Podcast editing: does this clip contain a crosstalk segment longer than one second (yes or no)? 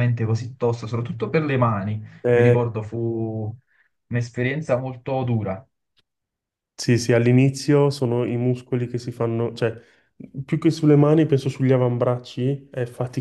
no